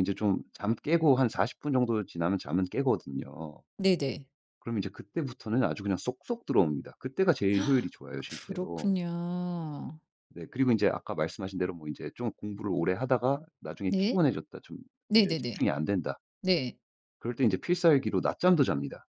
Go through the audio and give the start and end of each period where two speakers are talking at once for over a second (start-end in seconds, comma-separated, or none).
none